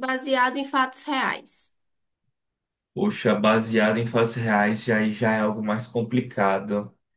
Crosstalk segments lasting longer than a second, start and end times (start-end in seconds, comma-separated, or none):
none